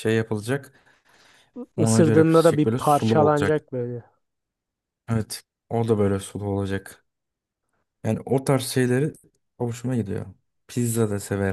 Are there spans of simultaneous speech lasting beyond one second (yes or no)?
yes